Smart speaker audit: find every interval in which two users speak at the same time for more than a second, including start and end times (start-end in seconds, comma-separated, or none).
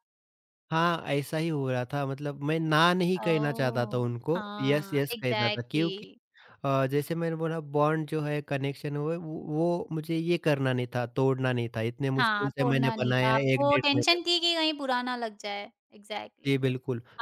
3.2-6.0, 12.2-14.2